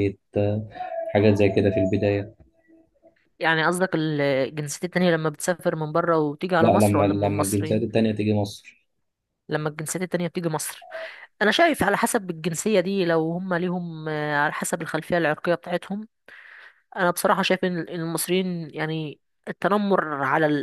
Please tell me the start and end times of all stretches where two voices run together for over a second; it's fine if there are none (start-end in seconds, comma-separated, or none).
6.6-8.0